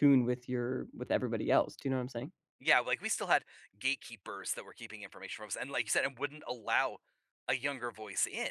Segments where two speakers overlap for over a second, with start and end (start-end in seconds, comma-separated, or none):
none